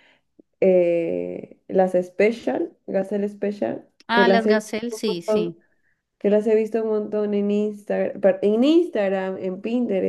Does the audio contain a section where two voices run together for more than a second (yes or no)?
yes